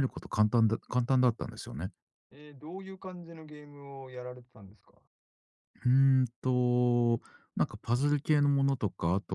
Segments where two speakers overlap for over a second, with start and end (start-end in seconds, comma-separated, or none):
none